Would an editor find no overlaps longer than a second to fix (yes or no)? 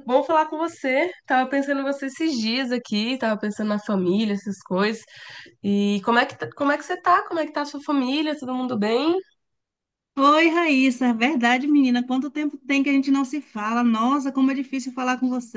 yes